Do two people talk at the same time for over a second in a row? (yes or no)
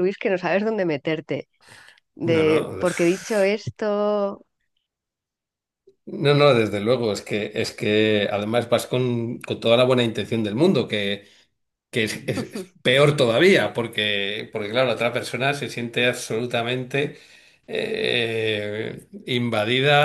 yes